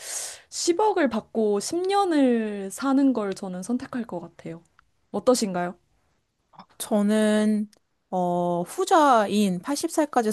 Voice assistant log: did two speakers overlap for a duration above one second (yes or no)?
no